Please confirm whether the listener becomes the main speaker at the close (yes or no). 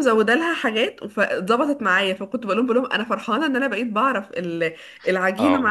no